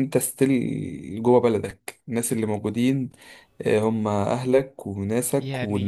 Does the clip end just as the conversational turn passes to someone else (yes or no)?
yes